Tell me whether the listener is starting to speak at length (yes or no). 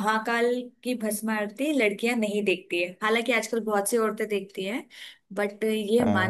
no